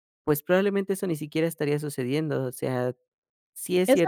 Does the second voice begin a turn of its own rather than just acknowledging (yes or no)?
yes